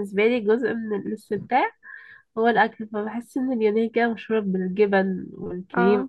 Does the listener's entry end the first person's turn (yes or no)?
no